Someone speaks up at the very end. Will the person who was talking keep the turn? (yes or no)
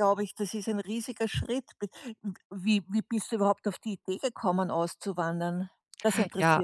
no